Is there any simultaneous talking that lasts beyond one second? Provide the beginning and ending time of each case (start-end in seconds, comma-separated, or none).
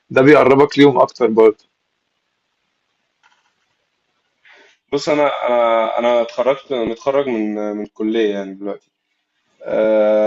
none